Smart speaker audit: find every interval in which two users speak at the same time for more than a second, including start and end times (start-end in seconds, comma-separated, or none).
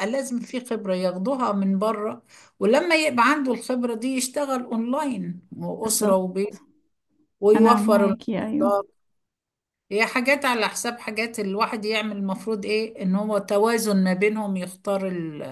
7.5-8.8